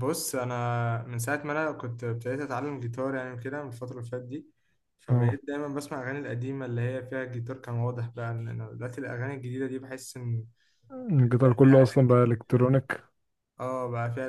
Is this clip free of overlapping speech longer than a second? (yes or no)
no